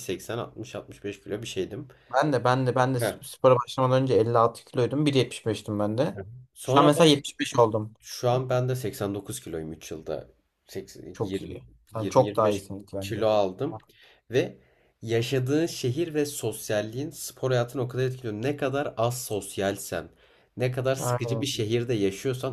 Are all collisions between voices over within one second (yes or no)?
no